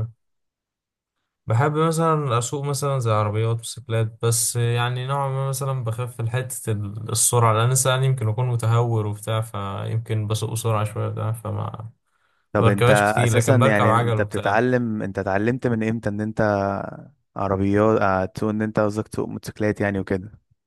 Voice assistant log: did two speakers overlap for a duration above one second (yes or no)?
yes